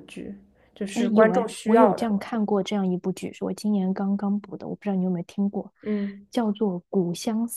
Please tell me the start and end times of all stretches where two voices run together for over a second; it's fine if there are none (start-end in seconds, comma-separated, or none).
0.9-2.4